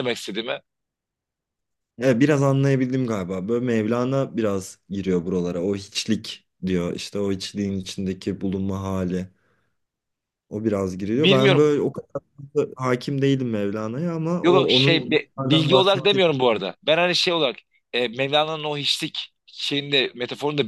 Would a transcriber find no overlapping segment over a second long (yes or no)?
no